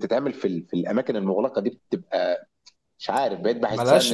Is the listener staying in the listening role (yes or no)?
no